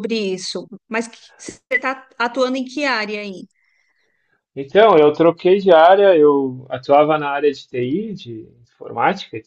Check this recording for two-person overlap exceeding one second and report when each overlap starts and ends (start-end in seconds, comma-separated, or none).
none